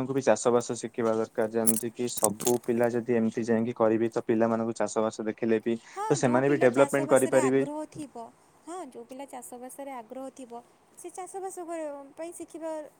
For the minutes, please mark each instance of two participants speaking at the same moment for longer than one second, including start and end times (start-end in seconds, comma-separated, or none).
6.0-7.6